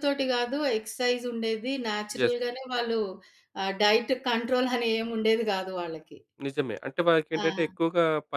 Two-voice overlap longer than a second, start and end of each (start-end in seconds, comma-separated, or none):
none